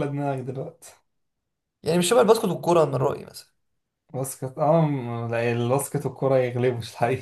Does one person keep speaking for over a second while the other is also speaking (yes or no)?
no